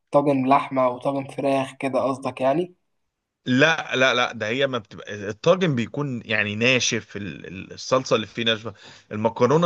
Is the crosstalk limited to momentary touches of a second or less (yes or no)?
yes